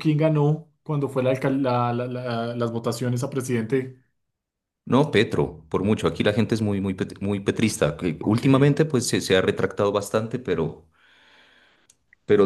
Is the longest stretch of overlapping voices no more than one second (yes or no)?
yes